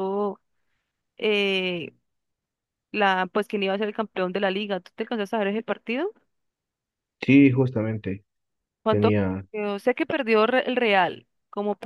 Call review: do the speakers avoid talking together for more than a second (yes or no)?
yes